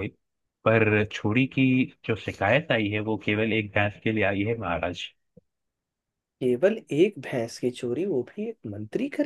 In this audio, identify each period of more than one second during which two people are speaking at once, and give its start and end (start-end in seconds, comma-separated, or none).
none